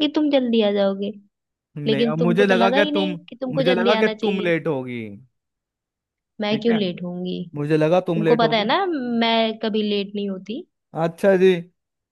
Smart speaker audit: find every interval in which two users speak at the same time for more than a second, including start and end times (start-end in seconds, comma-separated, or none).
1.9-4.5